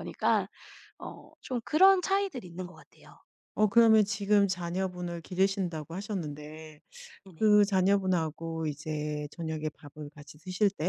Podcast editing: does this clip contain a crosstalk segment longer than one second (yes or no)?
no